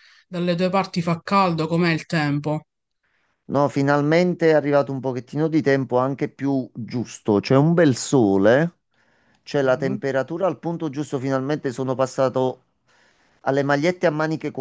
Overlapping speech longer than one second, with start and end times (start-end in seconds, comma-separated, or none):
none